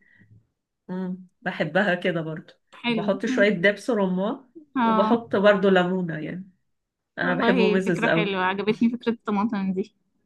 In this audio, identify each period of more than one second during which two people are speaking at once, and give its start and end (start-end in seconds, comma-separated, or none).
7.2-8.4